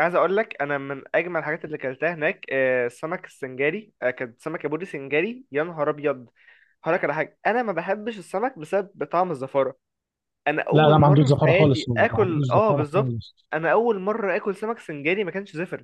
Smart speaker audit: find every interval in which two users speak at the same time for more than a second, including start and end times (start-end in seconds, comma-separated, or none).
10.7-13.2